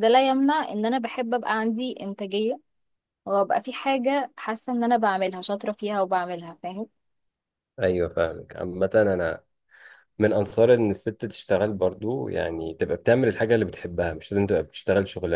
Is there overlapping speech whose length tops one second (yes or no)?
no